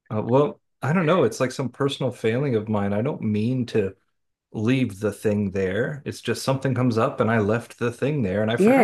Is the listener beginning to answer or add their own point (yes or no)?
yes